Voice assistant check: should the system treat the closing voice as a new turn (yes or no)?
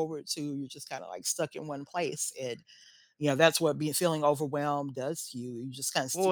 yes